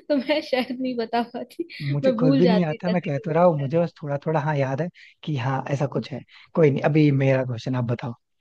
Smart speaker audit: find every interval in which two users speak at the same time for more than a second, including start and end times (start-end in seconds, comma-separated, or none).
2.0-3.9